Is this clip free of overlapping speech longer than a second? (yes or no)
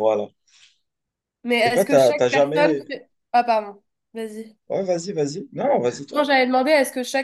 no